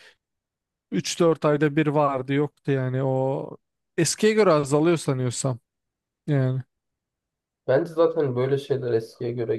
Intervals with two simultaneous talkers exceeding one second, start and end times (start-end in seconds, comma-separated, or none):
none